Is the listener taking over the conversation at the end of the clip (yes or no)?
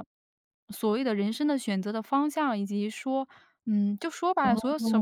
no